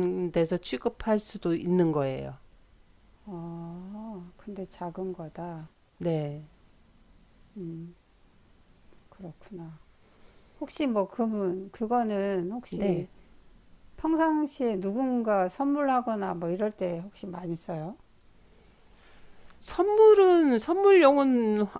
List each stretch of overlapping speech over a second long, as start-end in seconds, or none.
none